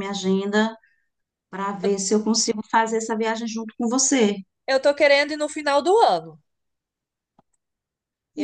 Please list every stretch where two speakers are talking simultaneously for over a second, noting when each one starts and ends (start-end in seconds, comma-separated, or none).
none